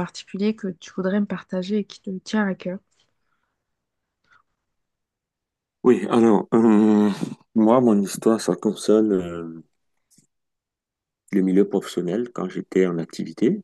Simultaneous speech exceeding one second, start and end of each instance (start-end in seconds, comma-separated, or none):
none